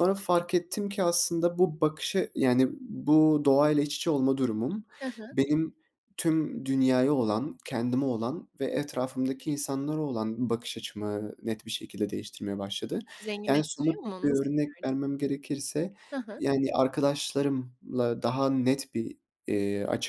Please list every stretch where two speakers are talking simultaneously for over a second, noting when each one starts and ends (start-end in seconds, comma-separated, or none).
13.5-14.9